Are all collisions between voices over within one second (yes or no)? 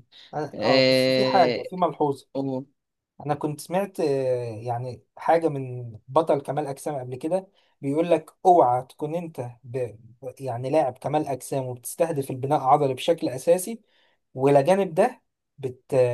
no